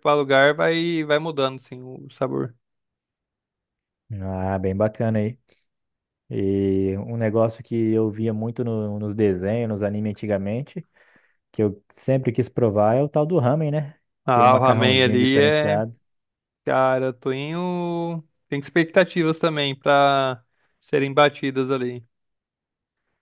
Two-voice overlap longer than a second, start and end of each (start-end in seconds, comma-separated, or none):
14.3-15.8